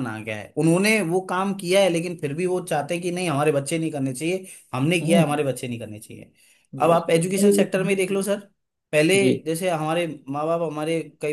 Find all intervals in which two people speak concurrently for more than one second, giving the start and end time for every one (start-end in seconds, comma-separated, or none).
6.8-8.3